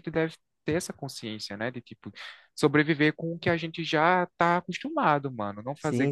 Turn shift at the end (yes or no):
yes